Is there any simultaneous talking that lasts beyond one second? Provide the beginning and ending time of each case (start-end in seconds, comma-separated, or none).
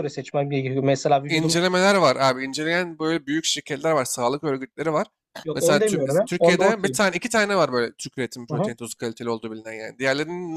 5.5-7.0